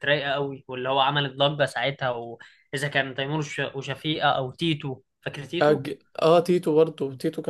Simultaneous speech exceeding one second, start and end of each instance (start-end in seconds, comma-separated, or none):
none